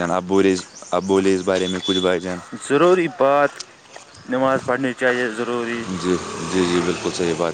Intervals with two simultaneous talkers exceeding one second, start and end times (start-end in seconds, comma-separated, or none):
none